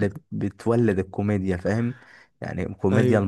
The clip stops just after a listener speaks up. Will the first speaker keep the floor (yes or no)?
yes